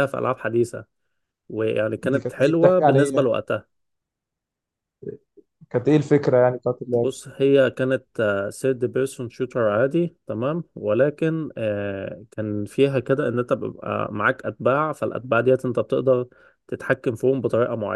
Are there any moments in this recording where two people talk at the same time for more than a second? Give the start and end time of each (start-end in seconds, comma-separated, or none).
2.1-3.3